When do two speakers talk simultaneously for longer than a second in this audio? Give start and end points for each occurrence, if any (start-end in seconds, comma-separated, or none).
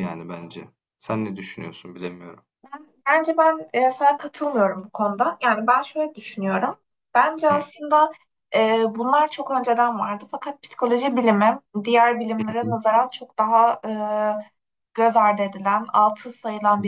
none